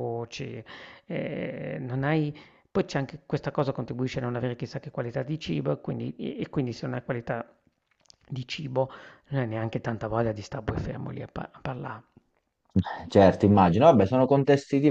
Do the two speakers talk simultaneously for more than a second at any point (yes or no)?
no